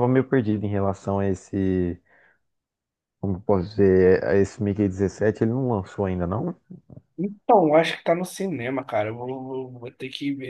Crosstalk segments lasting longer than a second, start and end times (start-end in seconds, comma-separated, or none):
none